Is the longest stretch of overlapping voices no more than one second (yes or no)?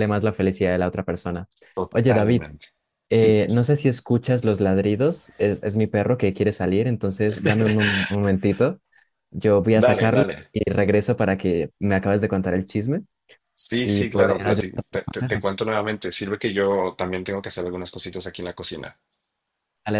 no